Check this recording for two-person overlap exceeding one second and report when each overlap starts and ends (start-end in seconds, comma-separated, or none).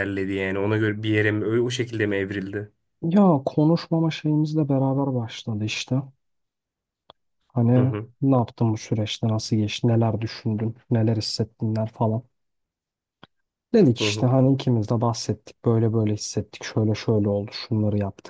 none